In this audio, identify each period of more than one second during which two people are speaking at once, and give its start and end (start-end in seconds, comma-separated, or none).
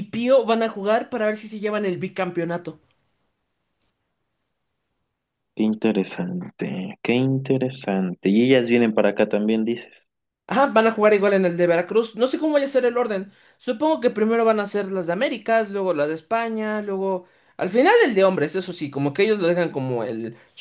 none